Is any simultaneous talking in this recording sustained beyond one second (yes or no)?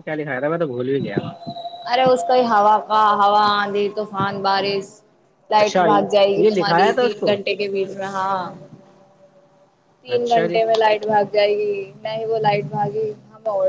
yes